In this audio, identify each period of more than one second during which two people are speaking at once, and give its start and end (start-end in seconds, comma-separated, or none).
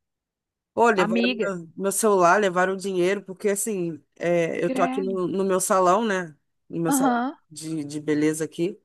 none